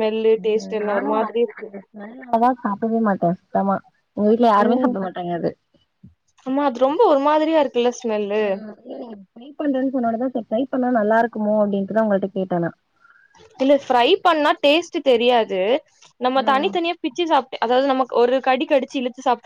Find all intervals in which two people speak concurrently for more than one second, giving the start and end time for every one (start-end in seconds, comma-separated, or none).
none